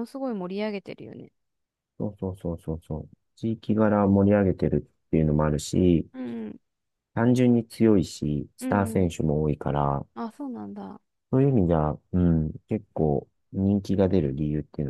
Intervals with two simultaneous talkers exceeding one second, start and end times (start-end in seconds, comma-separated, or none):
none